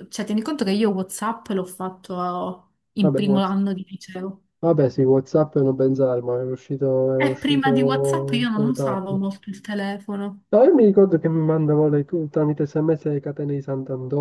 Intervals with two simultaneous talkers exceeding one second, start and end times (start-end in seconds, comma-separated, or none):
7.2-9.2